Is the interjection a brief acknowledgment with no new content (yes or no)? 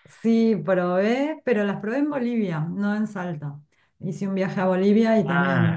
yes